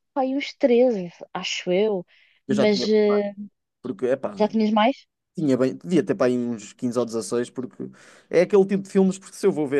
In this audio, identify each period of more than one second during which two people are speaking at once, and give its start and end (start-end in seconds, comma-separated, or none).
none